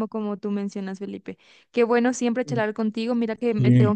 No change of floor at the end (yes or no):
yes